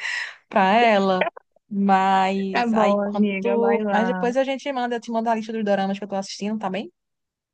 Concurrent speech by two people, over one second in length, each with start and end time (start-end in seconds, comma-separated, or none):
2.5-4.3